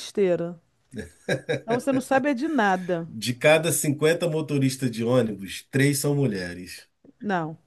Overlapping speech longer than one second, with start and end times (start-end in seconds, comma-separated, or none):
none